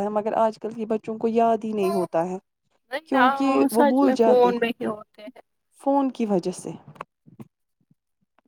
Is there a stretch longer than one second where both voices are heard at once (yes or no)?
yes